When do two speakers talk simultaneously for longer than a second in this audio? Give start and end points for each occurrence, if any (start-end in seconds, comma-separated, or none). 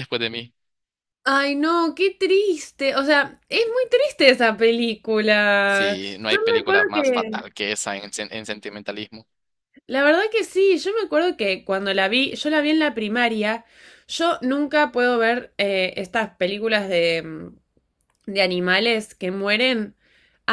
5.7-7.3